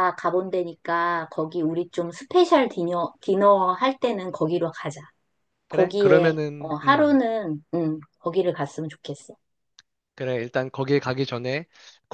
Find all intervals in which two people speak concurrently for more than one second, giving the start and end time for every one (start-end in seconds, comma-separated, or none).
5.7-7.2